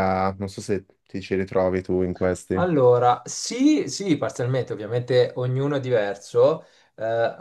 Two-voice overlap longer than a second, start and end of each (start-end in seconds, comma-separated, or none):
none